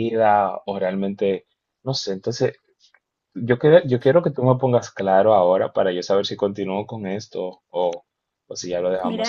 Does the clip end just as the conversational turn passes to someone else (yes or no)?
yes